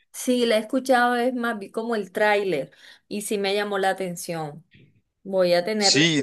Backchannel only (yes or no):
no